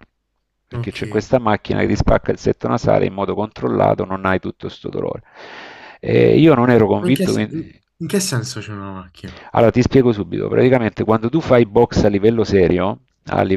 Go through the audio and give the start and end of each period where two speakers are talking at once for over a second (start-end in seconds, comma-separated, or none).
none